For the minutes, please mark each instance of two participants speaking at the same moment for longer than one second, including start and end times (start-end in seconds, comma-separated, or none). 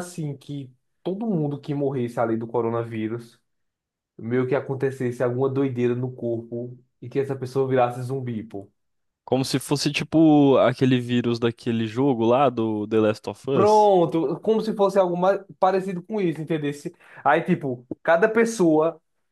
none